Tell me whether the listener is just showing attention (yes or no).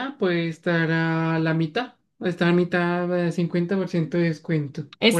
no